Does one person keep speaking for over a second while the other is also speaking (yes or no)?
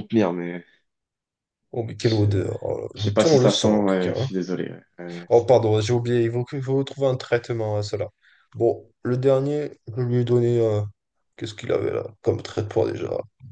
yes